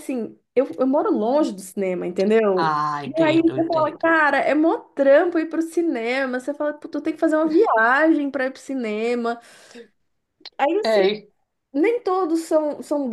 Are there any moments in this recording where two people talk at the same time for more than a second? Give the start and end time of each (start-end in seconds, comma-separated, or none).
2.6-4.0